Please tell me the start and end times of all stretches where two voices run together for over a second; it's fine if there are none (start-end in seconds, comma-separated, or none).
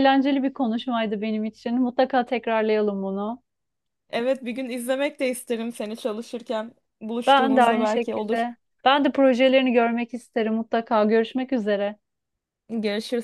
7.3-8.5